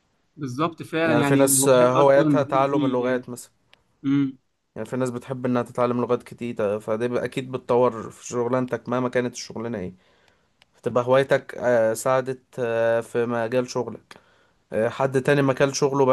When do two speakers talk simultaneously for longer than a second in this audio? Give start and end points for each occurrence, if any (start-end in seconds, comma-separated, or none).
1.0-3.0